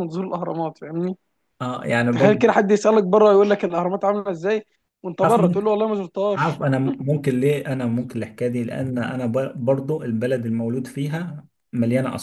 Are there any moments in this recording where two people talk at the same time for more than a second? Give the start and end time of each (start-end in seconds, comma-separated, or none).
none